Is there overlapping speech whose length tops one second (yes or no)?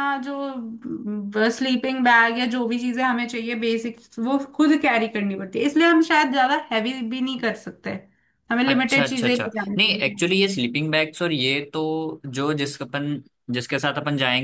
yes